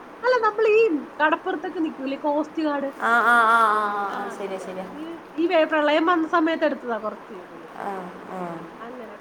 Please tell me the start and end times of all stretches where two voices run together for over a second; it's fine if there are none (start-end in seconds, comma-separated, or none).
none